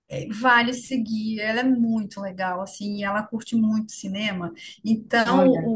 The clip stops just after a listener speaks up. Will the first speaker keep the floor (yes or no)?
yes